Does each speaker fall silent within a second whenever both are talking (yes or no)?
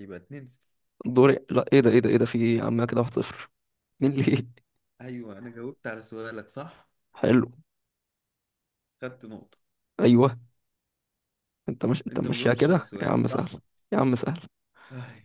no